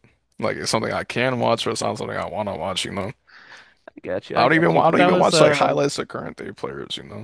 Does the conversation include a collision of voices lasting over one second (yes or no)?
yes